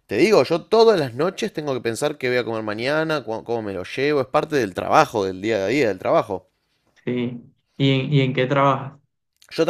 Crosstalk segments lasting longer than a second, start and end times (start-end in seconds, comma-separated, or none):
none